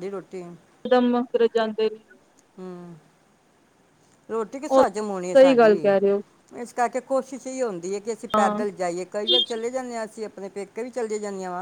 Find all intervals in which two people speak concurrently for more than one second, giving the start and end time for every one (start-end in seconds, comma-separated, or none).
none